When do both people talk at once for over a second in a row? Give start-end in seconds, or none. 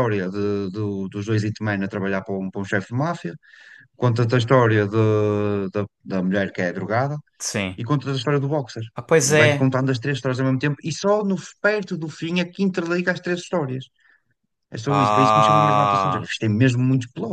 14.8-16.3